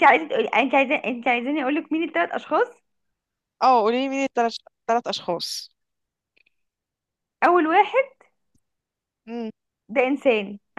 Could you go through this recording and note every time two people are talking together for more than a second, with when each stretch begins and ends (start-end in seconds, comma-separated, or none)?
none